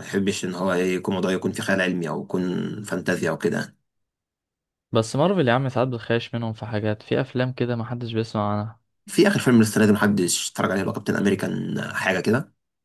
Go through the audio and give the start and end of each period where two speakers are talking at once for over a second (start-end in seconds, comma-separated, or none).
none